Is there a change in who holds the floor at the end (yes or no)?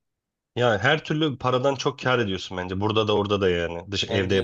yes